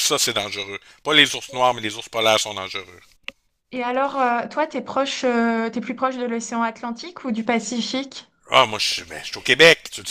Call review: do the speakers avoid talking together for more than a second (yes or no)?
yes